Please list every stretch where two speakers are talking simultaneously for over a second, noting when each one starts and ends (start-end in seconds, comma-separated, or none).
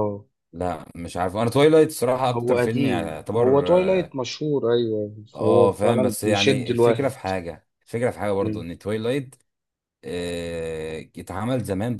2.4-4.2, 5.3-7.1